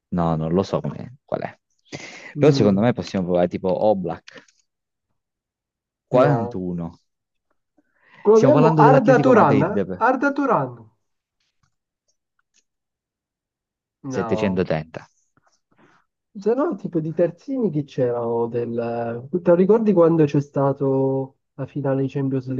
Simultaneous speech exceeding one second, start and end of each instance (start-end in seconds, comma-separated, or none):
8.3-10.1